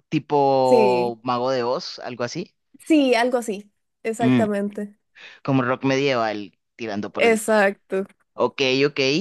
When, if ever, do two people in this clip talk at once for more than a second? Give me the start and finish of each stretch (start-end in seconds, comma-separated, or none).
none